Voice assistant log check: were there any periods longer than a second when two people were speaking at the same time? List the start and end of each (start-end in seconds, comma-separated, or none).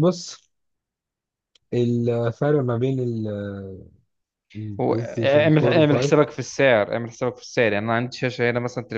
4.8-6.2